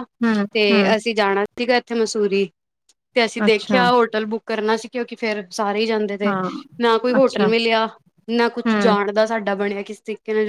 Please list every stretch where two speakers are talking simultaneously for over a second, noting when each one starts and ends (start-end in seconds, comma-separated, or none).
none